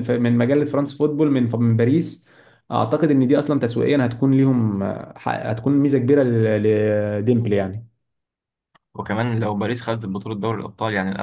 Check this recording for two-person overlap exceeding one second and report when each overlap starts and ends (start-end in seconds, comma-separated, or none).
none